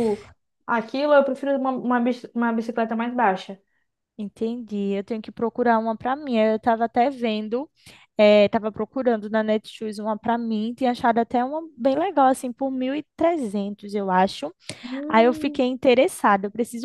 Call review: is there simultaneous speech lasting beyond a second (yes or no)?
no